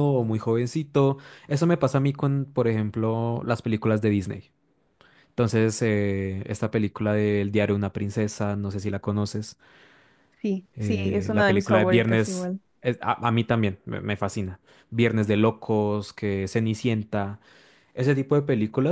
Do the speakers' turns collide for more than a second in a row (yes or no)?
yes